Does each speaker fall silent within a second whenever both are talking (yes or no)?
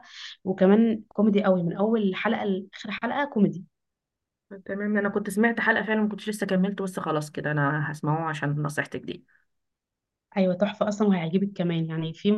yes